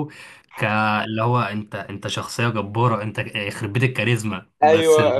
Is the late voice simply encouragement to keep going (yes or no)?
no